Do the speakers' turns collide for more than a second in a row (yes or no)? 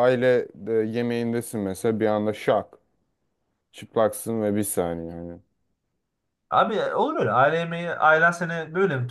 no